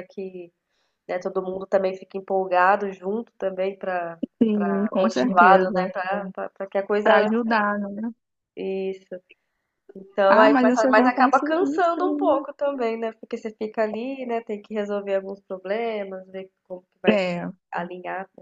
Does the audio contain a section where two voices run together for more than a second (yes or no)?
yes